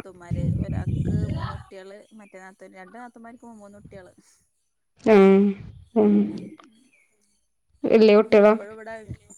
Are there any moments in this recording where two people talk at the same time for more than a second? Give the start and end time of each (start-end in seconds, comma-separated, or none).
none